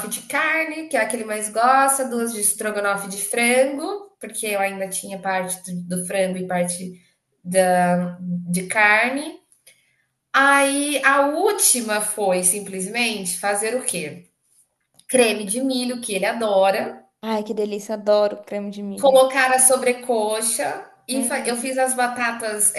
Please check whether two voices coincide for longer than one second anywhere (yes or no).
no